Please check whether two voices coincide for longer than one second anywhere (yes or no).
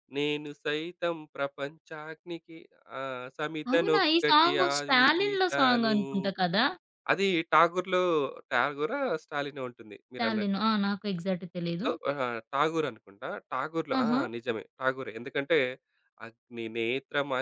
yes